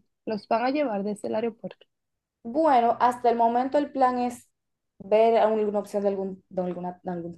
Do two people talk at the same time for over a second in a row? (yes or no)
no